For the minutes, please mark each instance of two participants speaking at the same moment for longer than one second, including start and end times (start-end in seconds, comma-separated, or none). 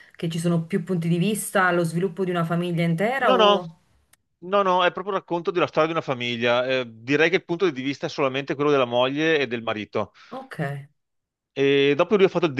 none